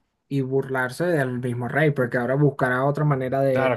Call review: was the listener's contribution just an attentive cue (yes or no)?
no